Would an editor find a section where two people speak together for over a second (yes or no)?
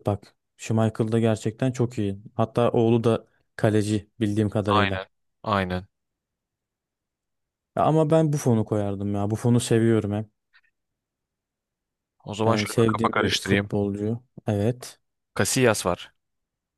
yes